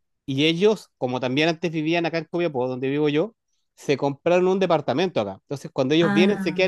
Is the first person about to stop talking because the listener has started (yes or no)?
no